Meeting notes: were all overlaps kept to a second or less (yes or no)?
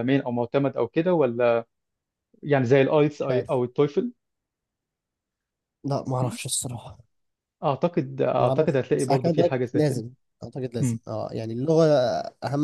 no